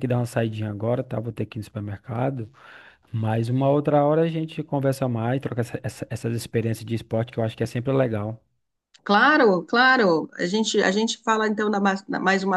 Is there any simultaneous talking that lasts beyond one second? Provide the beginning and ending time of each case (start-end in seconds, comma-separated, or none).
none